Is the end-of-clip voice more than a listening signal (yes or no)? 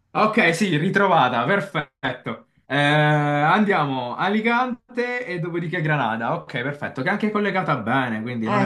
yes